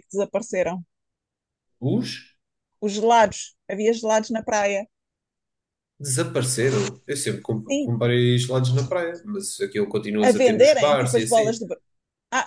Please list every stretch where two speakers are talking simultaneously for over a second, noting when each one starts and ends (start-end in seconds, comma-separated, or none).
10.2-11.6